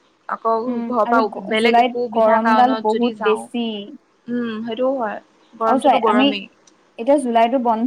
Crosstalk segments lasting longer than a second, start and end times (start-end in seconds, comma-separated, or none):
0.7-3.6